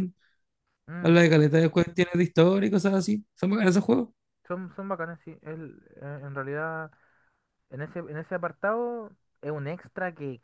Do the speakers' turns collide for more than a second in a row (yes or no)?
no